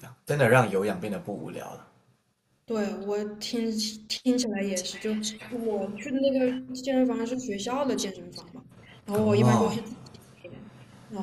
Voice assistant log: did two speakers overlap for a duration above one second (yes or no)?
no